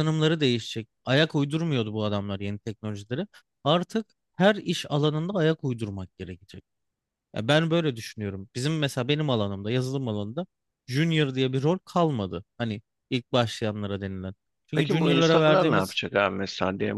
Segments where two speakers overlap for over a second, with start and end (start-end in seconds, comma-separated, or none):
14.8-16.0